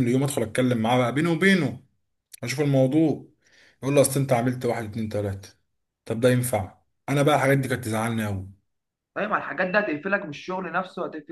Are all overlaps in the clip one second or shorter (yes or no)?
yes